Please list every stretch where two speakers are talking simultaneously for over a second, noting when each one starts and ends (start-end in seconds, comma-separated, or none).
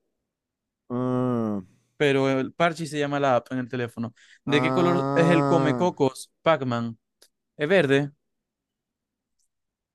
4.5-5.9